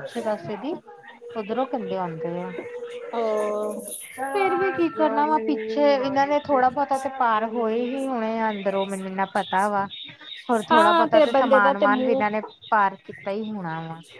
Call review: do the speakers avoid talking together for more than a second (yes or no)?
no